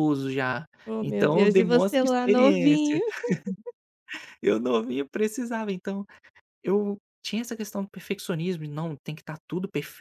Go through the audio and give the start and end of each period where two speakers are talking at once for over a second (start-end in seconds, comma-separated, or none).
1.0-3.0